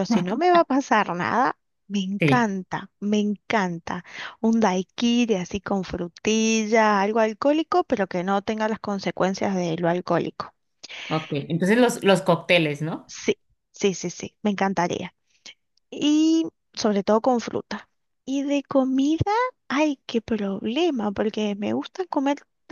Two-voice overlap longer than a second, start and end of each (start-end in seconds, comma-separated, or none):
none